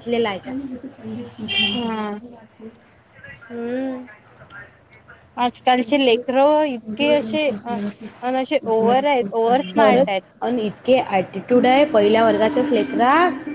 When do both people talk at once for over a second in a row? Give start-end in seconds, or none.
none